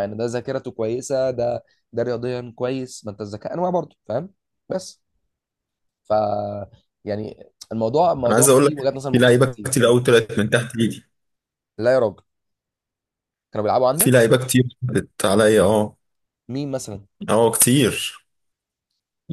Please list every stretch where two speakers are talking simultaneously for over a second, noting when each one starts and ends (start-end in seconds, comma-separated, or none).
8.2-9.8